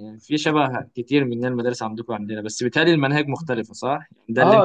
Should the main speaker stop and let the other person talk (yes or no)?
yes